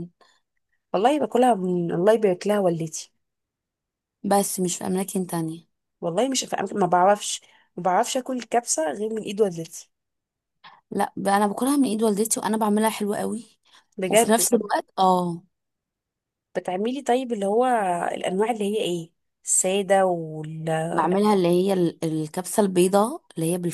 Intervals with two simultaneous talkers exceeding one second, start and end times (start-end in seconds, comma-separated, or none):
none